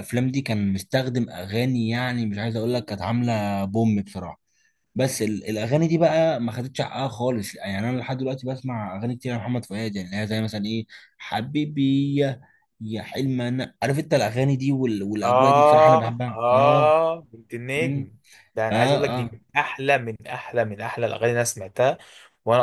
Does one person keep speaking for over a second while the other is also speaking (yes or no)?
yes